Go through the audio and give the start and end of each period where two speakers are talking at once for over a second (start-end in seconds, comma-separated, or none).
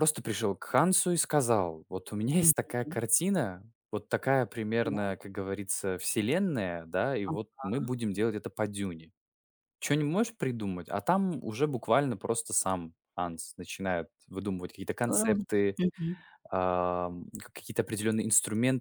none